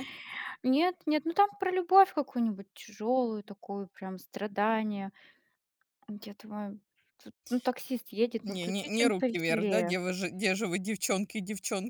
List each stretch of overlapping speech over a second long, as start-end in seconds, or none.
8.5-10.0